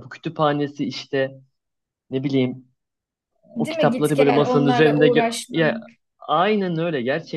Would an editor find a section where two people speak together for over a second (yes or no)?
yes